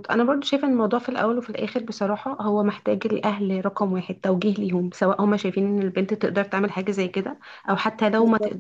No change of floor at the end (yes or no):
yes